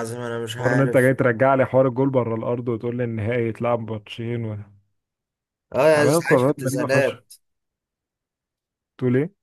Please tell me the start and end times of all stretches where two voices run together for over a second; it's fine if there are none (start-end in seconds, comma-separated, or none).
5.9-7.2